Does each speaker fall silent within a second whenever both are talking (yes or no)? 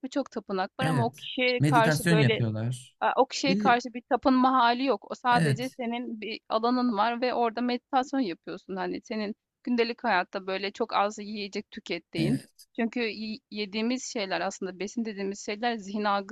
no